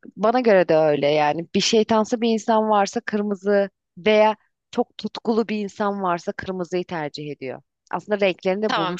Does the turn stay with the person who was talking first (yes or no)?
no